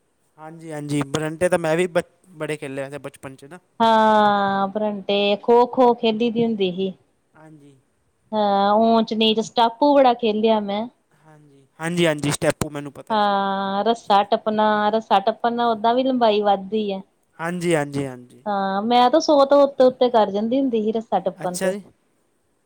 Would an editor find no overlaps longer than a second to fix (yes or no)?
yes